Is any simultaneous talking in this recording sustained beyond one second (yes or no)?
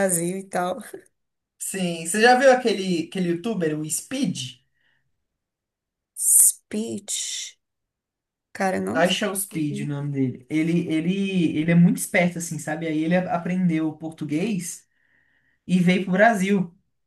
no